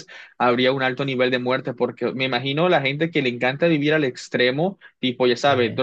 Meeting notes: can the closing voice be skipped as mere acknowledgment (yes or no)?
yes